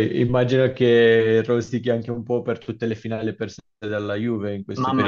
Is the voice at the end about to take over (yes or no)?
yes